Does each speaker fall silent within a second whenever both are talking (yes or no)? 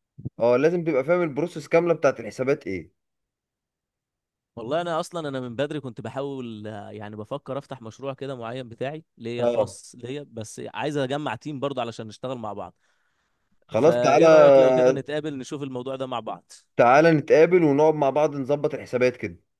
no